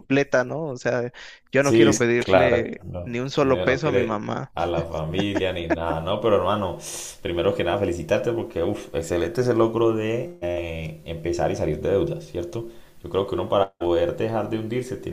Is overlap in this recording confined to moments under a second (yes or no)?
no